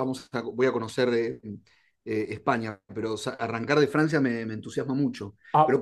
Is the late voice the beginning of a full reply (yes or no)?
no